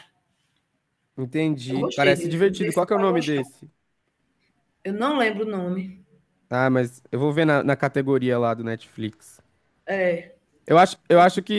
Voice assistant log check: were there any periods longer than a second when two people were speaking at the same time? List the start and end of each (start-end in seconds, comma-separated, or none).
1.7-3.4